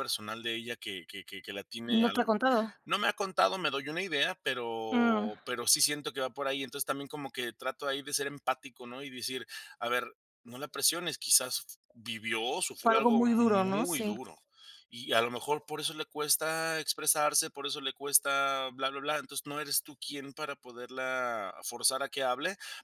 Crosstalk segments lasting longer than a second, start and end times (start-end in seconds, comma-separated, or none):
12.8-14.2